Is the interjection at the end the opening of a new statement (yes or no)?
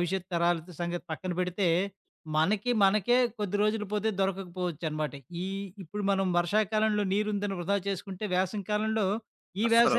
no